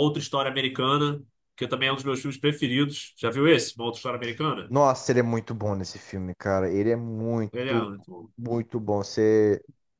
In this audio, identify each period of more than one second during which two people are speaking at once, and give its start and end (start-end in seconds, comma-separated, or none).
none